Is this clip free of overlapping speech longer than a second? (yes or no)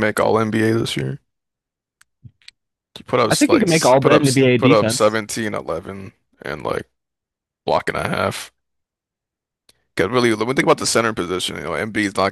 no